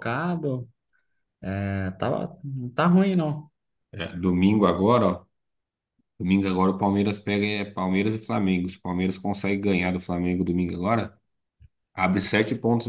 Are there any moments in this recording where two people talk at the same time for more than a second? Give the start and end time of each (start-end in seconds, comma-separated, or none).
none